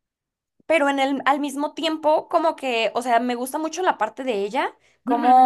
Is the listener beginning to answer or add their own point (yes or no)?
no